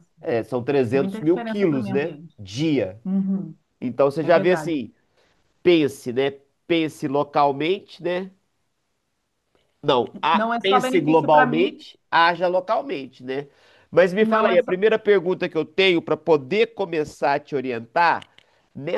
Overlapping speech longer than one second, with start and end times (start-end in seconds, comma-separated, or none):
0.9-2.4, 10.3-11.7